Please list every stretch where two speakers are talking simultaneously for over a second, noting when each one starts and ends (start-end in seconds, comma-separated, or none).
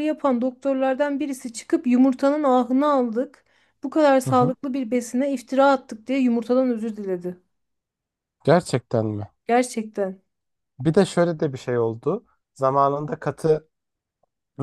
none